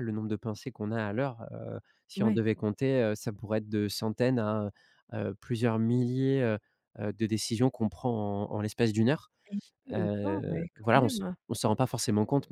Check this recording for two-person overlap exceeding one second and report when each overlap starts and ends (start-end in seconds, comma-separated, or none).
9.9-11.4